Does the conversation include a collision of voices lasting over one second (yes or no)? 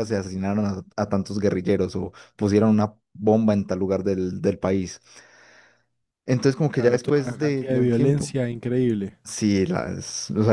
yes